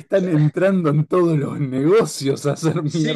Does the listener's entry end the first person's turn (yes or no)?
yes